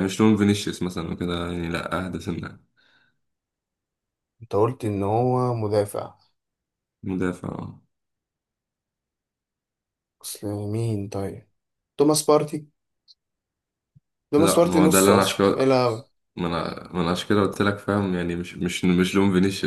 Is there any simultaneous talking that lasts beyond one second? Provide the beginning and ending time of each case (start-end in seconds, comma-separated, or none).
14.4-15.7